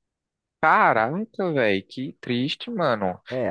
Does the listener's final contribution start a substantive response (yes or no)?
yes